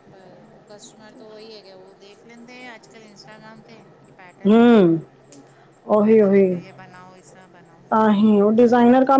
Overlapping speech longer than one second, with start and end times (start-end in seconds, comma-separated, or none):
none